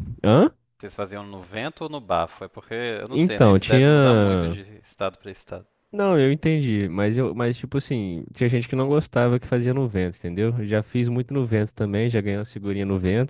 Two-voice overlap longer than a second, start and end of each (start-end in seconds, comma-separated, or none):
3.1-4.6